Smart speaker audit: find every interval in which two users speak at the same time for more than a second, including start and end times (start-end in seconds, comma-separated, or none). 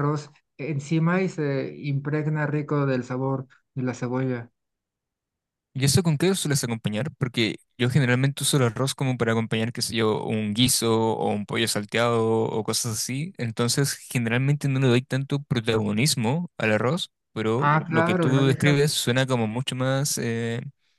17.6-18.8